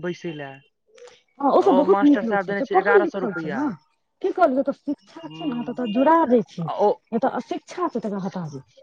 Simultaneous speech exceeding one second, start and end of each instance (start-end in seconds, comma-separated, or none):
1.6-3.6